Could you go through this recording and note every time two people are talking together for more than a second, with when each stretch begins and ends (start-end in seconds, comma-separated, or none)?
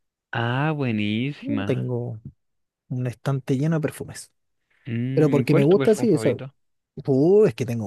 5.1-6.4